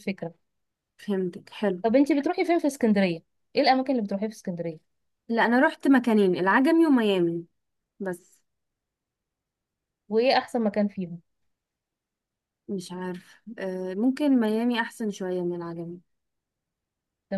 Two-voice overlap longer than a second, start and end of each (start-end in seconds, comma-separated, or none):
none